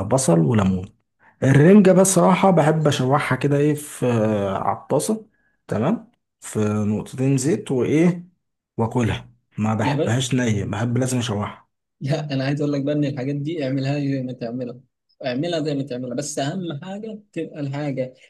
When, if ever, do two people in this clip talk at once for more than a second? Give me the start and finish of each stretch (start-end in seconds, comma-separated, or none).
none